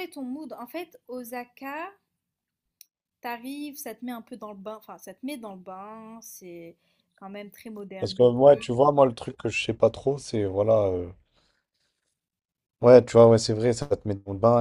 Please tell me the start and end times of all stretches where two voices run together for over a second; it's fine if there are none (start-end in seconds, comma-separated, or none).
none